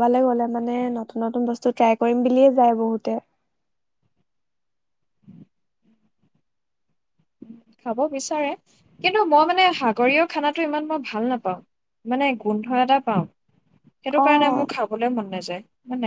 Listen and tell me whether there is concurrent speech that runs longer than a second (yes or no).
no